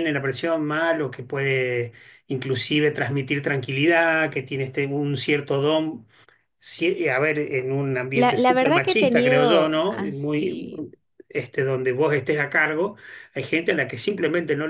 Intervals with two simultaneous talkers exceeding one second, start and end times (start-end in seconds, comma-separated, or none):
8.1-10.7